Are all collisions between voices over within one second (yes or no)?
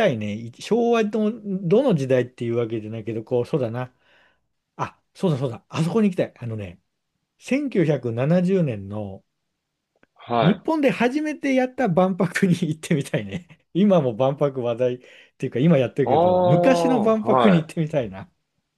no